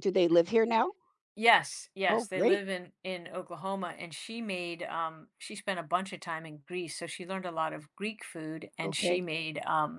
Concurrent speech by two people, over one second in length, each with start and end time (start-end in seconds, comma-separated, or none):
none